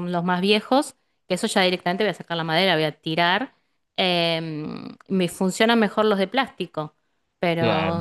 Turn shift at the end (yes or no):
no